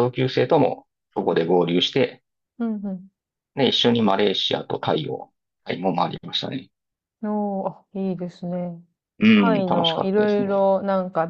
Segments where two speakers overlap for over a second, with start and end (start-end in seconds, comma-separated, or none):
9.3-10.7